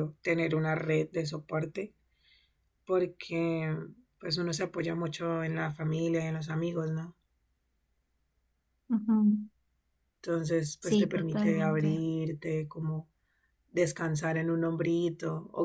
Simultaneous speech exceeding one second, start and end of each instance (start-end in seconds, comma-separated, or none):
10.8-12.0